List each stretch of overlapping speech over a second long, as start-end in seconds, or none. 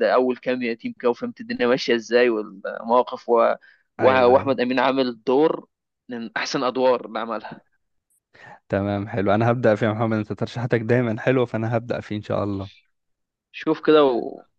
none